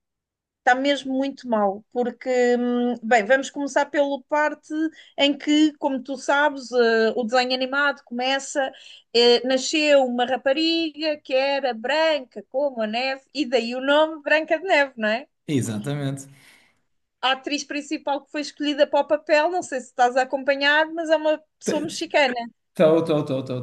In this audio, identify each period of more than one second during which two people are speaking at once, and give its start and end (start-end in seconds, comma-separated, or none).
none